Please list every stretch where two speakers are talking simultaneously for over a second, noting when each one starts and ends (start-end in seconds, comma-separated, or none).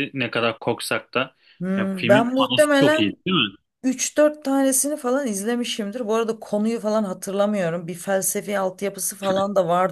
1.8-3.2